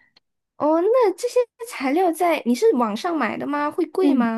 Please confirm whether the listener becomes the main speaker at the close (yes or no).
yes